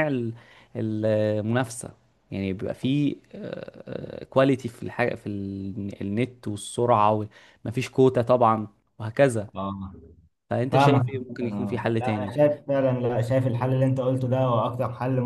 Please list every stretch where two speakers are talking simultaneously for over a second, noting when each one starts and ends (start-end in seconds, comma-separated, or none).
10.7-12.3